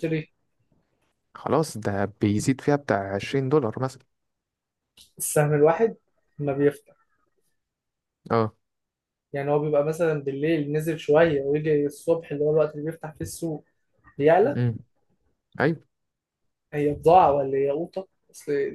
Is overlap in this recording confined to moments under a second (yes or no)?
yes